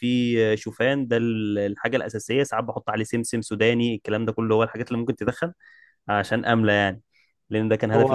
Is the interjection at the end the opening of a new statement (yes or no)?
yes